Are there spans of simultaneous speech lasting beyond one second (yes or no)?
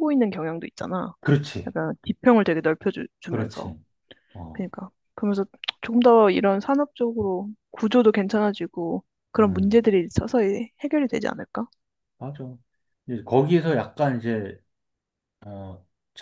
no